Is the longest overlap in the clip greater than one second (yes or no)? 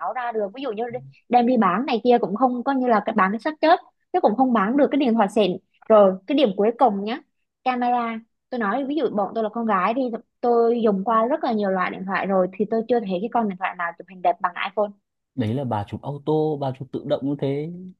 no